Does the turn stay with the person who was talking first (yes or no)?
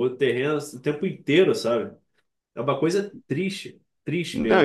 no